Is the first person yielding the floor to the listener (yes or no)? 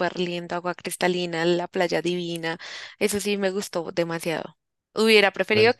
no